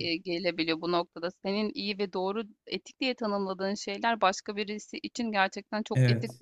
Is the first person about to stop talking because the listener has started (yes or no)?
no